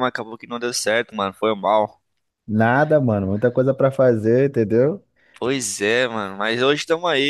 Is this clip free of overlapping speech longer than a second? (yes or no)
yes